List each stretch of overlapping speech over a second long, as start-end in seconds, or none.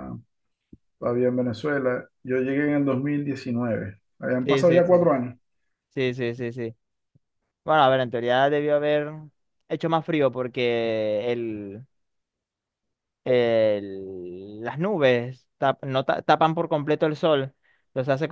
none